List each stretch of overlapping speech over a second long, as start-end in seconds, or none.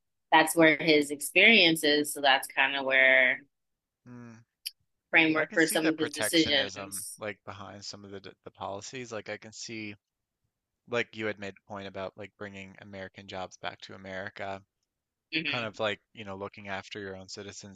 5.3-7.2